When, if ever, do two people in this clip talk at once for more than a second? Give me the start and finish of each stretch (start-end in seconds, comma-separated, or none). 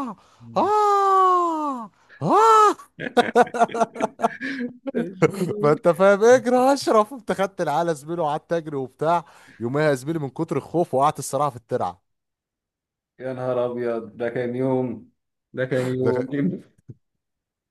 none